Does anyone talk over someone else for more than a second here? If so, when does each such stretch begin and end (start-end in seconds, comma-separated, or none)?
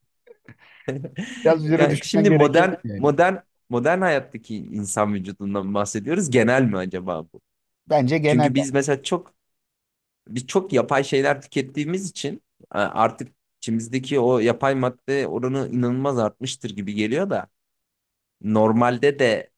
1.8-3.1